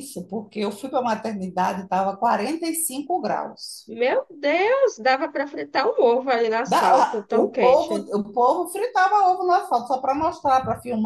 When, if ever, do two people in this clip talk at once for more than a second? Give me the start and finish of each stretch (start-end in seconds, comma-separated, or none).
6.7-8.1